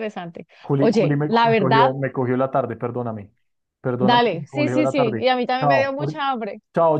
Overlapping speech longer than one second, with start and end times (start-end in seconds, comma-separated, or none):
0.6-1.9, 4.0-6.2